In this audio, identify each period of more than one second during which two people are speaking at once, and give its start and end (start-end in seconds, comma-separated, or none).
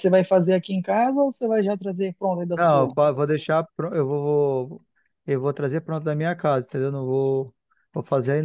none